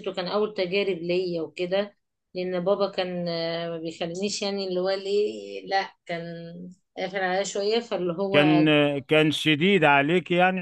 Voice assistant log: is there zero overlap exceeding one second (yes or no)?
yes